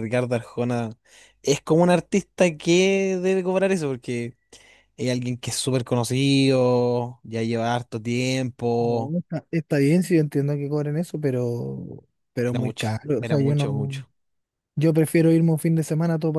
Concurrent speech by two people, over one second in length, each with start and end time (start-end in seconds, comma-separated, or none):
12.5-13.9